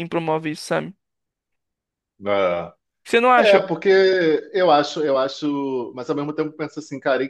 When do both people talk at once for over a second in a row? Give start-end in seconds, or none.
none